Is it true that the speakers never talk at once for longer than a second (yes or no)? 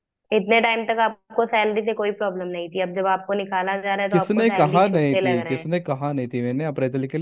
no